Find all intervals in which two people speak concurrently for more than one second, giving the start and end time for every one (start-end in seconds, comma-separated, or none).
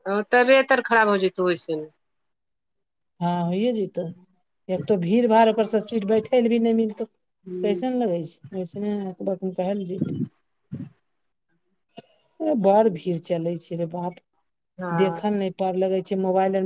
none